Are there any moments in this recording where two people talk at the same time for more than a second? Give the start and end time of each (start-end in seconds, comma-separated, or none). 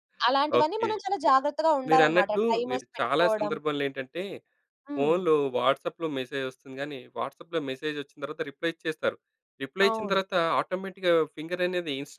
1.9-3.5